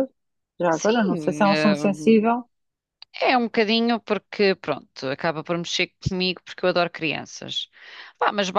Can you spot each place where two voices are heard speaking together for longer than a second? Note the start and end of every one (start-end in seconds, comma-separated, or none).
0.7-1.9